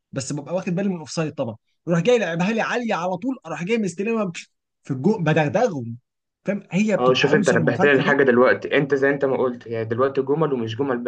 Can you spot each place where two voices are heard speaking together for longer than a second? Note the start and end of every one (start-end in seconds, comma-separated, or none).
6.9-8.2